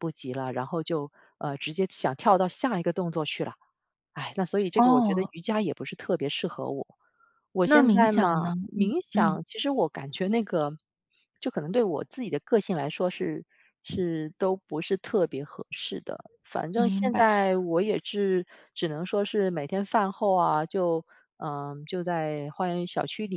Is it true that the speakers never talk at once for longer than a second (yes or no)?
no